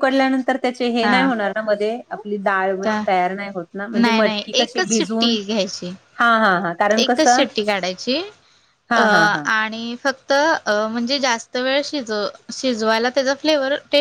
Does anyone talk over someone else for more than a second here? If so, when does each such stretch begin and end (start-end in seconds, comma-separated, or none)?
4.0-5.3